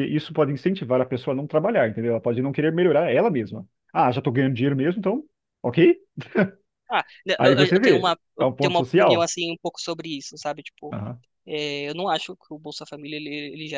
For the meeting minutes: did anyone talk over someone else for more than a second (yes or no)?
yes